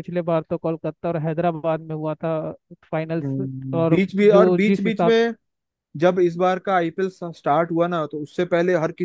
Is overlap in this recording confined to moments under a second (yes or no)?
no